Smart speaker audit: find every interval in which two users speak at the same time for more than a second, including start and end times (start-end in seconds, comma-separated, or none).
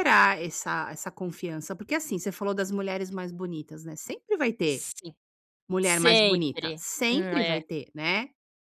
5.8-7.6